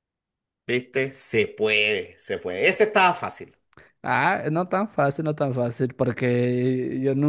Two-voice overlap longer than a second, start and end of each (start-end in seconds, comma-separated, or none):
none